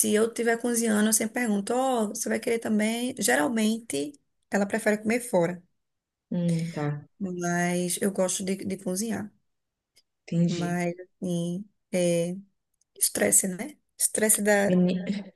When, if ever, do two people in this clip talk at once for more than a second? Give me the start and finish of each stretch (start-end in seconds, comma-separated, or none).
none